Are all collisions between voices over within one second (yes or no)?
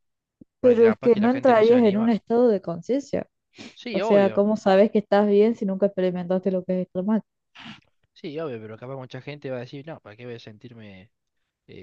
no